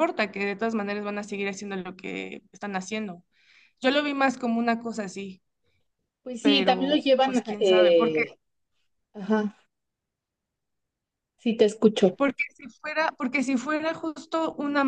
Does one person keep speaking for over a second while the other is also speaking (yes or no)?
yes